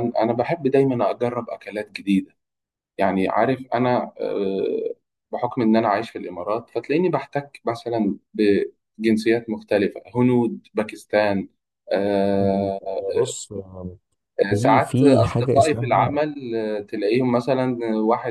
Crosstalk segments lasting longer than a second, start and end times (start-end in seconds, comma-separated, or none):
14.5-16.1